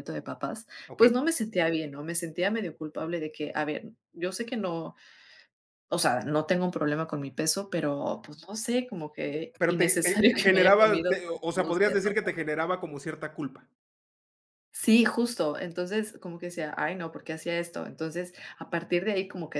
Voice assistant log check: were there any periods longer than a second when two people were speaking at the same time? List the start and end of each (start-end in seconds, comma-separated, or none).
9.6-12.3